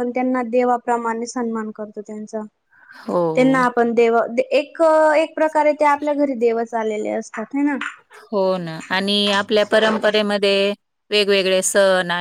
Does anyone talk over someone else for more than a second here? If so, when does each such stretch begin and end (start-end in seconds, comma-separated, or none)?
none